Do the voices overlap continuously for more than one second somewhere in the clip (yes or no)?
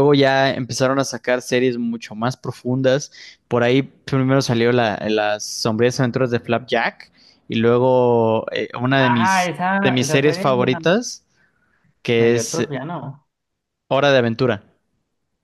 yes